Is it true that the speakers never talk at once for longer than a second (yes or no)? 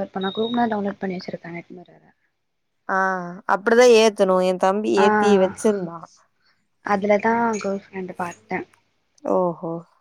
yes